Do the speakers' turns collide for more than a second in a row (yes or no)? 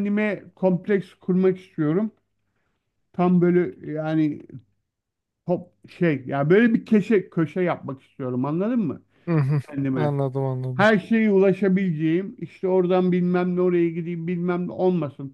no